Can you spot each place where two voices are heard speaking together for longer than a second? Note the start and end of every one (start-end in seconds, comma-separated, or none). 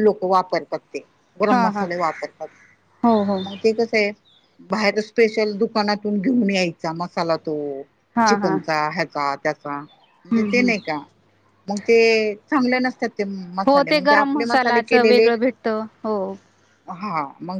13.7-15.3